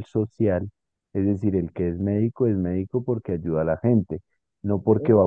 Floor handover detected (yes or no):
no